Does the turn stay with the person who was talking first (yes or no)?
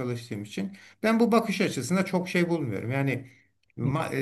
yes